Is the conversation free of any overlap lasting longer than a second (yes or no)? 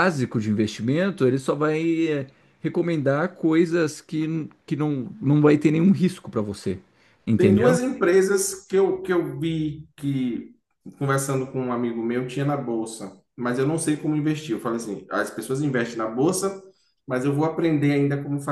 yes